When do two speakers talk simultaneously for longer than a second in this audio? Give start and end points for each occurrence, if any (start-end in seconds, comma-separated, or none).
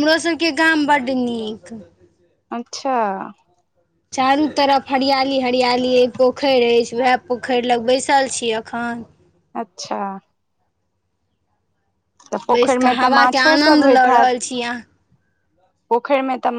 12.5-14.3